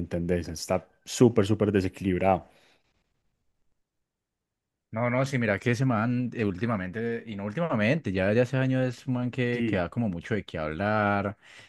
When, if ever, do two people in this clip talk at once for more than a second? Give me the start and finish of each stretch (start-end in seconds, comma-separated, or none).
none